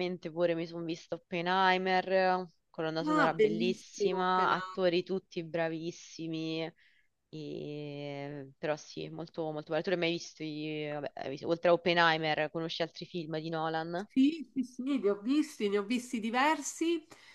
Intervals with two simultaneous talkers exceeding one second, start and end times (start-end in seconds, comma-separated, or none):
3.1-4.5